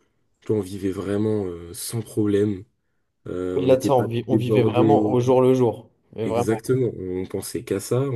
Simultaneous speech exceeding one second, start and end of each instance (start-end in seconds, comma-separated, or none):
3.5-5.2